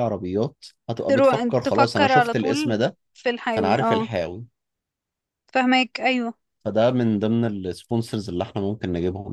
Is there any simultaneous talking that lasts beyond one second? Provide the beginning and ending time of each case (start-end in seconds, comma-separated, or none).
1.1-2.8